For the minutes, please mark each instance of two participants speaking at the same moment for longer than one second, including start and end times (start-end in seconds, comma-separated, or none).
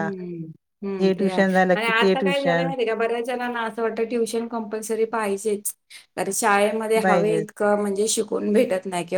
1.2-2.7